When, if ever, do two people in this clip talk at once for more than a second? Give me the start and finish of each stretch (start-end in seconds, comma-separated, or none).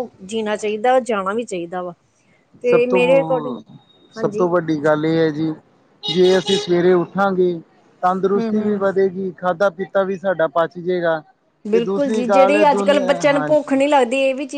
11.7-13.8